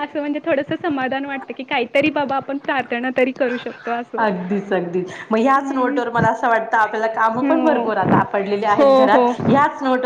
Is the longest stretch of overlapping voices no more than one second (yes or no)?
yes